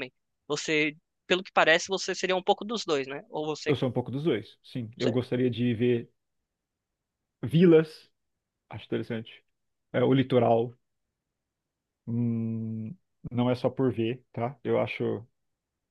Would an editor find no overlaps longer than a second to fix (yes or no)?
yes